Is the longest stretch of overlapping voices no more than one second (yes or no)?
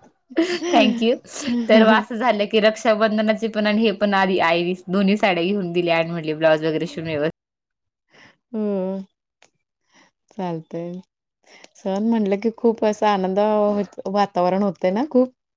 yes